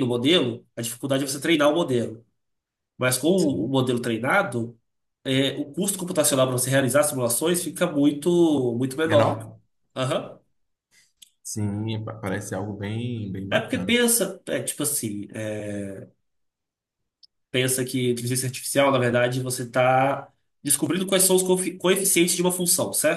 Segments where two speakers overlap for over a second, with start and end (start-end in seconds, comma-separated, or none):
none